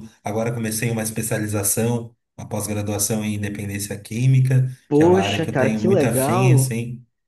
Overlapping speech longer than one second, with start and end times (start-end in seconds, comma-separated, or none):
4.9-6.7